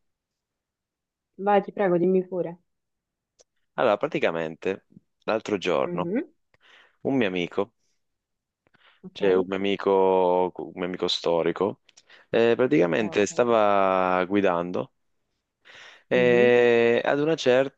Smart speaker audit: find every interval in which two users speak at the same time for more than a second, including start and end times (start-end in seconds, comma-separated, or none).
none